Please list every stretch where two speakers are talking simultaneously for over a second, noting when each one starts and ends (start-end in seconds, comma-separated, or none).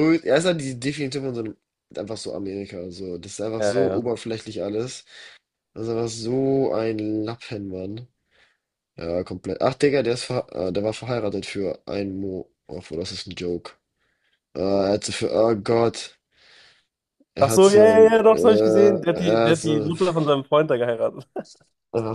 17.4-19.9